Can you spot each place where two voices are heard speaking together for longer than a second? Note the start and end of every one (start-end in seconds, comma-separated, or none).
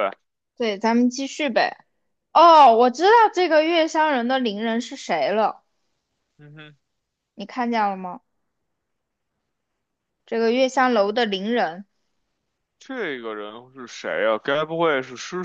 none